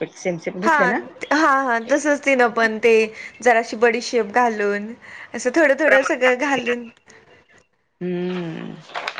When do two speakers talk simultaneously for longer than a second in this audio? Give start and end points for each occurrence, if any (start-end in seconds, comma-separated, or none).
none